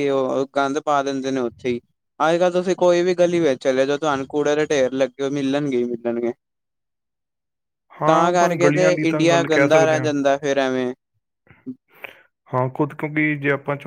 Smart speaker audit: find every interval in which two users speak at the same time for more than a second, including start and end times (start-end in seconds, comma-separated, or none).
8.1-10.1